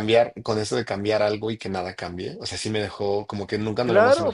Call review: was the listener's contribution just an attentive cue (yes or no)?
no